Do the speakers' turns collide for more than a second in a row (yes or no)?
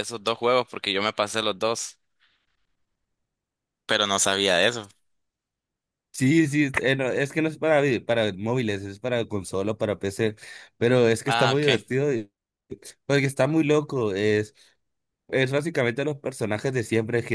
no